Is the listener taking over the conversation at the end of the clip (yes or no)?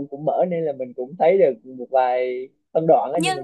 yes